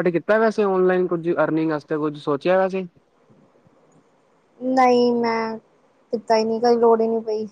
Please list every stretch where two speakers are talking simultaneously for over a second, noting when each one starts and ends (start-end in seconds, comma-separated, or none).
none